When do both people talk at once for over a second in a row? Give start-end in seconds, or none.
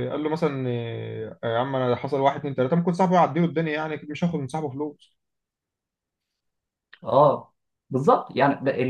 none